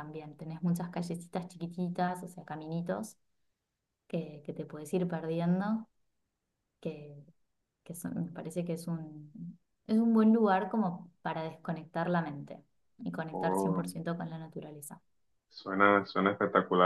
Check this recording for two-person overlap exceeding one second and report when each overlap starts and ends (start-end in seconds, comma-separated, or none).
none